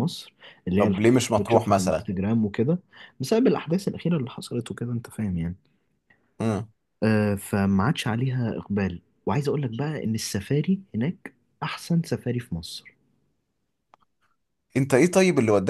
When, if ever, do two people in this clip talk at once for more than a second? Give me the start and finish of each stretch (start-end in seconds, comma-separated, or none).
0.8-2.1